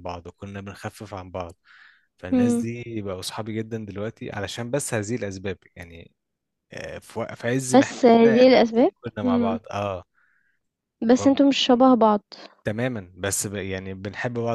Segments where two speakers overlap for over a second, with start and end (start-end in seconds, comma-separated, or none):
7.7-9.6